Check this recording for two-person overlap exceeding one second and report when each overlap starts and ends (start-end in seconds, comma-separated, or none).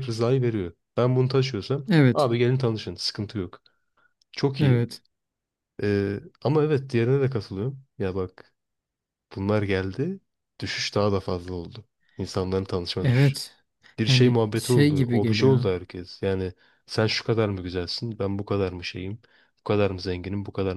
14.1-15.7